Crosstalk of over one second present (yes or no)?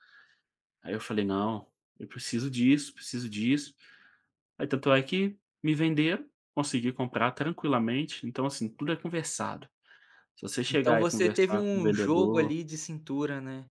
yes